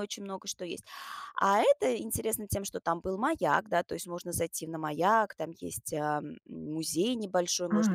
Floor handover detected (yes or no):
yes